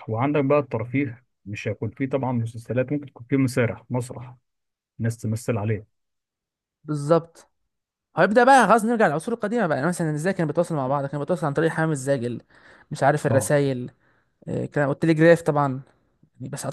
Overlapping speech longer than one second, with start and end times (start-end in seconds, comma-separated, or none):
none